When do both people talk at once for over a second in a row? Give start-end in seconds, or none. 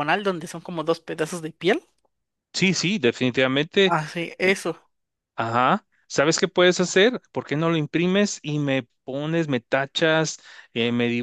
none